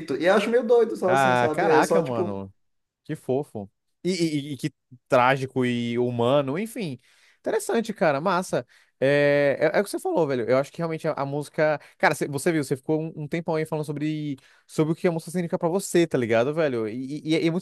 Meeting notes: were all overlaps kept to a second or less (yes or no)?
no